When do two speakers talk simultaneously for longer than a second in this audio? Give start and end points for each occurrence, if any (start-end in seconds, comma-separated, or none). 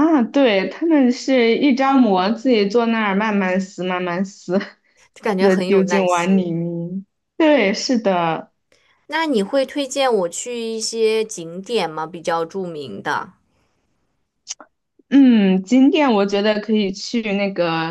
5.2-6.5